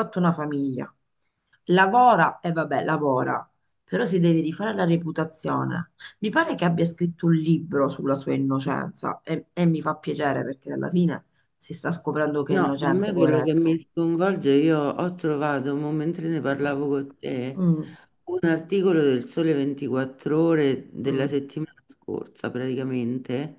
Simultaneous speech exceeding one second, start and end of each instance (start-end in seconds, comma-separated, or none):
12.5-13.8